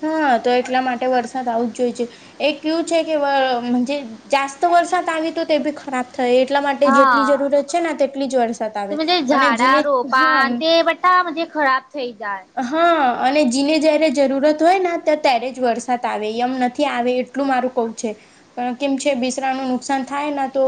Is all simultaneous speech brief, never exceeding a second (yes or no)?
yes